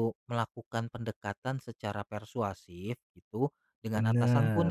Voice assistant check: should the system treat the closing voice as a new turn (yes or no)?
no